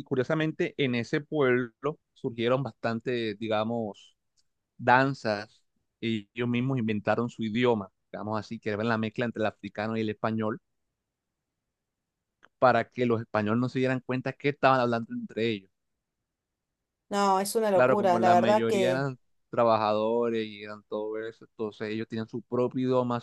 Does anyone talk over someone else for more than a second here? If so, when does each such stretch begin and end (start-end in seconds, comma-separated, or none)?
17.7-19.1